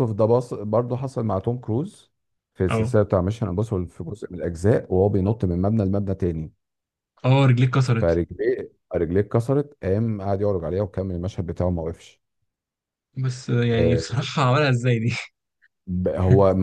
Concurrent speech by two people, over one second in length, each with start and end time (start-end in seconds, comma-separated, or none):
none